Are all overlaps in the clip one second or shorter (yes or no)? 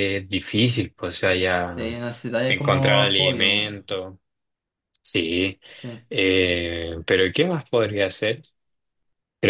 no